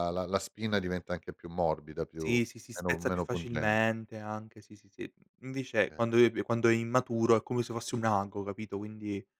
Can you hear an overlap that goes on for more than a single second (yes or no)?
yes